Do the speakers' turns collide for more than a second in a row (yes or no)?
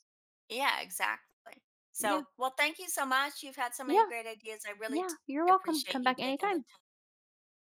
yes